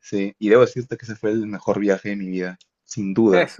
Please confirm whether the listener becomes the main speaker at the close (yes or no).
yes